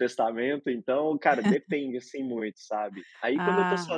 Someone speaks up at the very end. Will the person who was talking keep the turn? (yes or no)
yes